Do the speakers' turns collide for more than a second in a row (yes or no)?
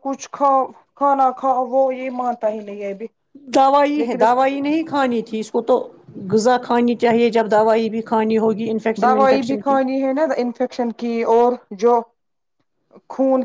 no